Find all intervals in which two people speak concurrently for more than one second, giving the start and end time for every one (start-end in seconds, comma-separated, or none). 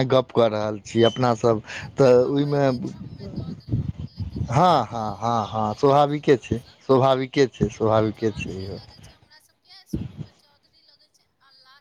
4.6-6.8